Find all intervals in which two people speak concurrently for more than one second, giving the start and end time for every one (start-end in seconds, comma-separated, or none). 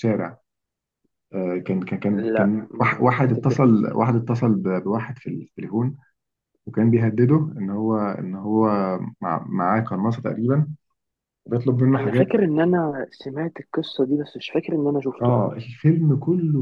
2.1-3.9